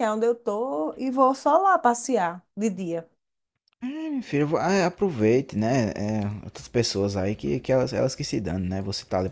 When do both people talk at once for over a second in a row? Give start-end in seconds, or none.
none